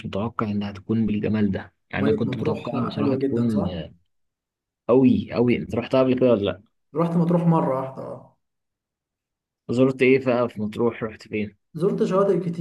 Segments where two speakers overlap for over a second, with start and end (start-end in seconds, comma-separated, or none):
1.9-3.7